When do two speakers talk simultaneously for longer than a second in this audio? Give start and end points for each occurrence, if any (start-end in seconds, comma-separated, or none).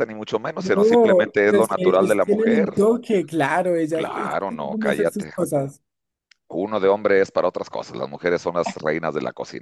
0.6-2.6, 3.9-5.3